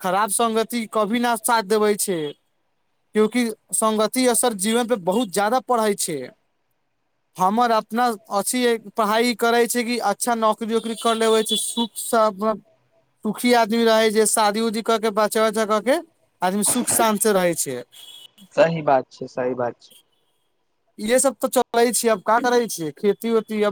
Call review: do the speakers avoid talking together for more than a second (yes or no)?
yes